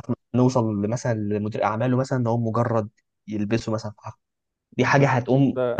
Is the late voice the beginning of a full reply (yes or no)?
no